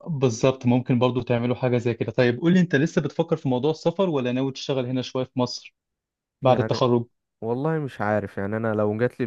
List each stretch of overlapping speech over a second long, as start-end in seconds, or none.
none